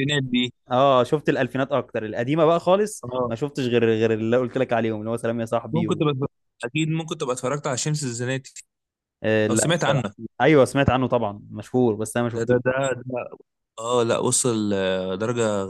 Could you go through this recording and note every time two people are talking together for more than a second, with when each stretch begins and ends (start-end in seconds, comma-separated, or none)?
none